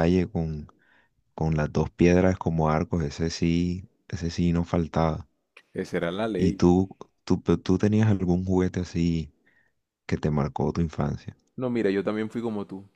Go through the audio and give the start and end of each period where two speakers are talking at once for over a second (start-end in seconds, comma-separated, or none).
none